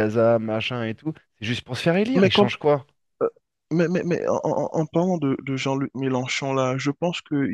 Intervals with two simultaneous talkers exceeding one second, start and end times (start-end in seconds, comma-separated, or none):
none